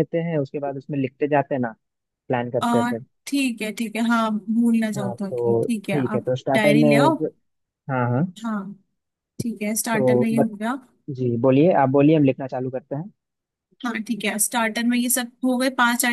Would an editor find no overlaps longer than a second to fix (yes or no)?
no